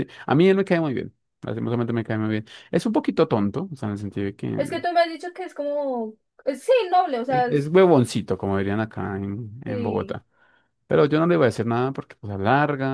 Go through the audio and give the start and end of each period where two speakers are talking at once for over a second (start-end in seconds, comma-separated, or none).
none